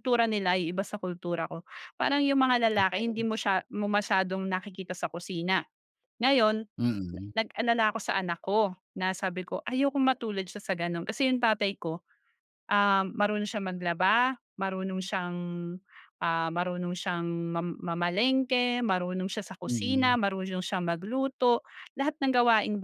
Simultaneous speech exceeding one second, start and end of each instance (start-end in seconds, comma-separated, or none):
none